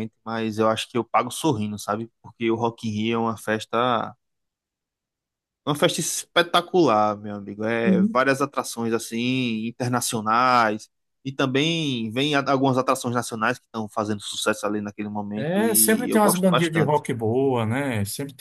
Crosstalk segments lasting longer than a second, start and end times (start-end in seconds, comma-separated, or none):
15.4-17.0